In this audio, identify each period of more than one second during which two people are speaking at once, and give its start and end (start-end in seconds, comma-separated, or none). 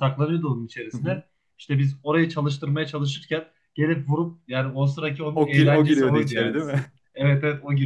5.3-6.9